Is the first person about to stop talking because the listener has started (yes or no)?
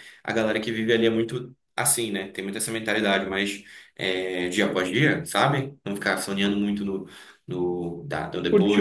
yes